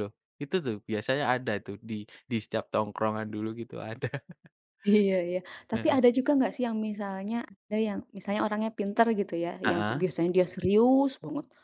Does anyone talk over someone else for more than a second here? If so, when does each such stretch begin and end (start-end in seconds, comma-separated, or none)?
none